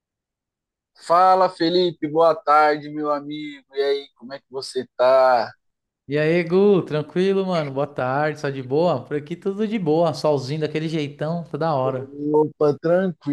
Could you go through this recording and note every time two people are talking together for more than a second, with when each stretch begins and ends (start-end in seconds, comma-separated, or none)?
none